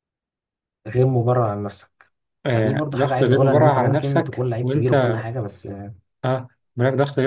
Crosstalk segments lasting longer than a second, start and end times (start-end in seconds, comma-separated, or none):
2.5-5.2